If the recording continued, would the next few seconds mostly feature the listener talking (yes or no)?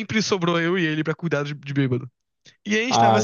no